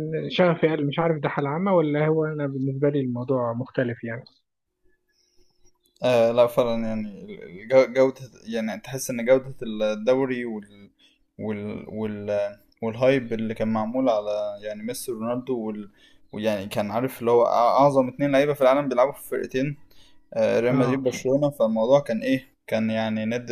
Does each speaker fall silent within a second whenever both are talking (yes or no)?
yes